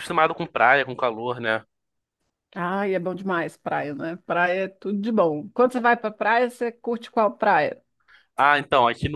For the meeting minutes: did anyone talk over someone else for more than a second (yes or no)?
no